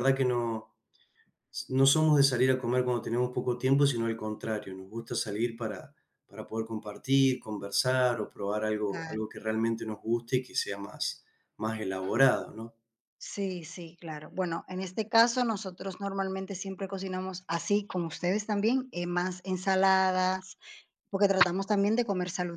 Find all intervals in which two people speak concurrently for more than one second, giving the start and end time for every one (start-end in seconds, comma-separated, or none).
none